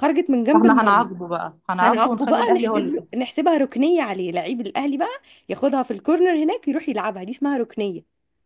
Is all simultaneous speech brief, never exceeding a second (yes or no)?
no